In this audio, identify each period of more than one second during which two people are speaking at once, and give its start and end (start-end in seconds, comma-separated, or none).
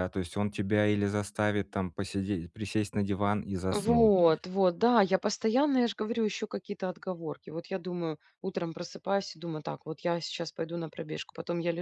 none